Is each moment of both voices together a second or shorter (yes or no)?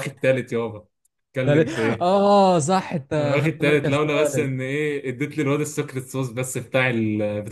no